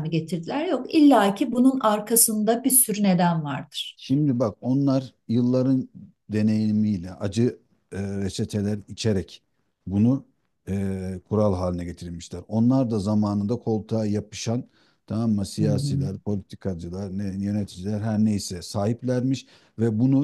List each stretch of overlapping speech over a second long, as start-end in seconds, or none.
none